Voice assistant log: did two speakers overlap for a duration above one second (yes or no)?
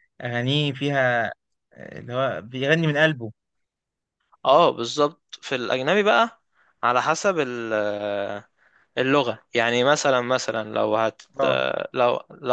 no